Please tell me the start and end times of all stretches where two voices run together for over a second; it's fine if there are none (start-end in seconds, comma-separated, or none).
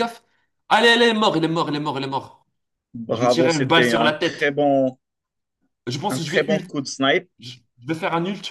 3.1-4.6